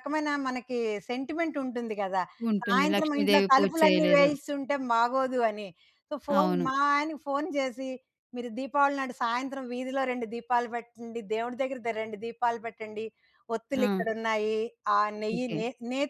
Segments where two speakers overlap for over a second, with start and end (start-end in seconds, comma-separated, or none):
2.7-4.3